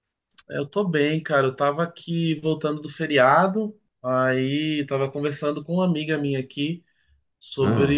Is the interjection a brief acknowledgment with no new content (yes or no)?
yes